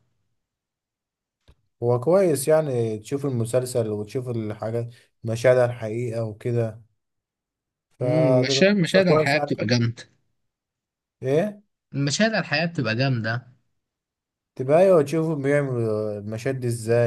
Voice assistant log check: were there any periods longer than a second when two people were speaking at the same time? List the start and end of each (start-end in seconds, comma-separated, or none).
8.0-9.5